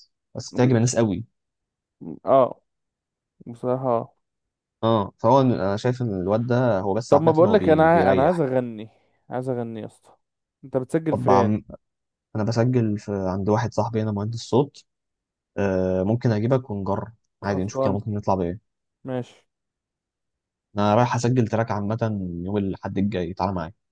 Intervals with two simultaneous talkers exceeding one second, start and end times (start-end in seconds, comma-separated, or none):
7.1-8.4